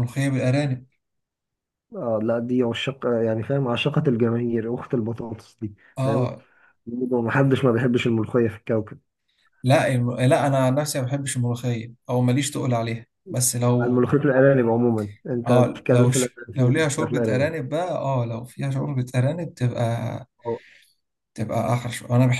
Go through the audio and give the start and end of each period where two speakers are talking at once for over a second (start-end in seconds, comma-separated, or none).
15.5-17.5